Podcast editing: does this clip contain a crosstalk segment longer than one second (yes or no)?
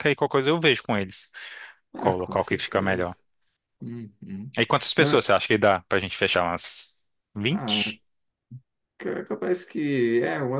yes